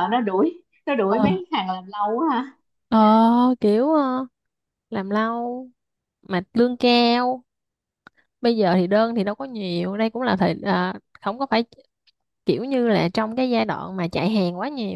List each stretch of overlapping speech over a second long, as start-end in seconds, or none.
none